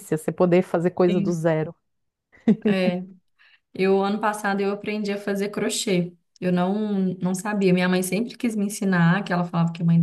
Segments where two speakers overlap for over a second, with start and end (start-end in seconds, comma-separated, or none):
none